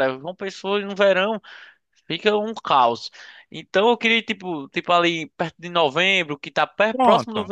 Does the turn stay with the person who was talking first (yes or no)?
yes